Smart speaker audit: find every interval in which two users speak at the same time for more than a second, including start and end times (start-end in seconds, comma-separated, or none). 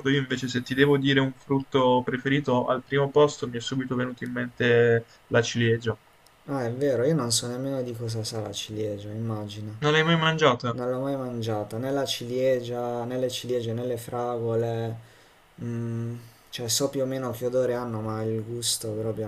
none